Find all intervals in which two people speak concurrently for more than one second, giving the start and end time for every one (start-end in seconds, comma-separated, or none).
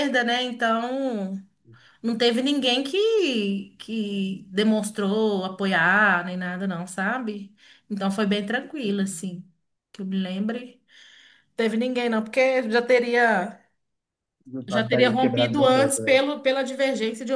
14.7-16.2